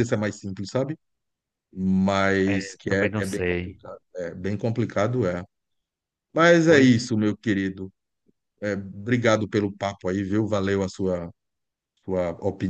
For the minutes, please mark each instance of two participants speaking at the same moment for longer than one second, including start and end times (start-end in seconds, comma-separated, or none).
2.5-3.8